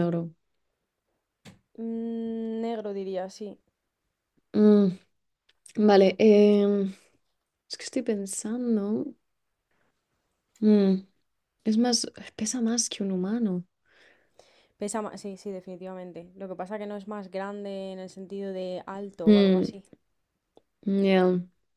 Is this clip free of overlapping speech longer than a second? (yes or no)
yes